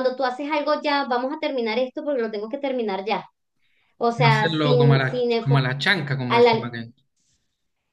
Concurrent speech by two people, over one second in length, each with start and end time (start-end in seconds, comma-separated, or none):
4.1-5.7